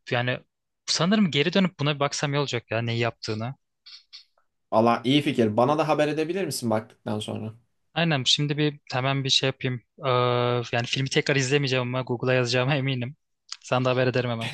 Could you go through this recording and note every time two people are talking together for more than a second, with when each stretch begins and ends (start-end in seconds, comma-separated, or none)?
none